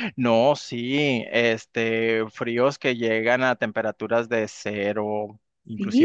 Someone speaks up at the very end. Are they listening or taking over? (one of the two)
listening